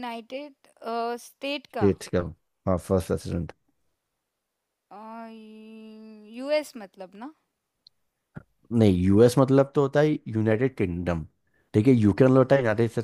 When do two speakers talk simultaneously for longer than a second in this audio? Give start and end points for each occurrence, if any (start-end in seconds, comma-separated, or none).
none